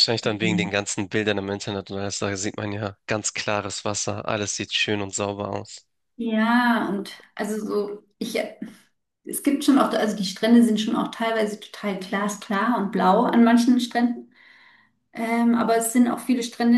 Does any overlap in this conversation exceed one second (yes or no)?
no